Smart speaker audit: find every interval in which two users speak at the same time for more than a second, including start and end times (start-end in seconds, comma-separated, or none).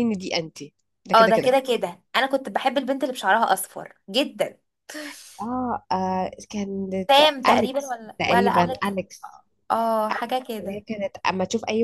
7.5-8.9